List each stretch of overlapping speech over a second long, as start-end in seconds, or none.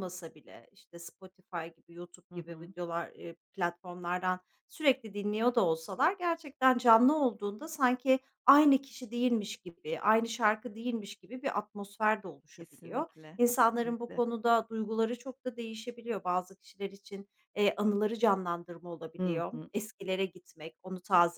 12.6-14.2